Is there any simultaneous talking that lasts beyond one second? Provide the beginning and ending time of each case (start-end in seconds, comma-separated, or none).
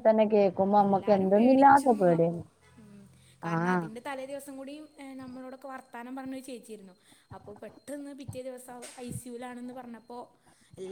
0.8-2.4